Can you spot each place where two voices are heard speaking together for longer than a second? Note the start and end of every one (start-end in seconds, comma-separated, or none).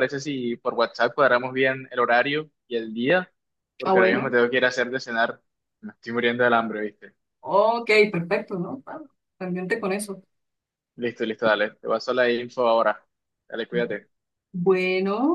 none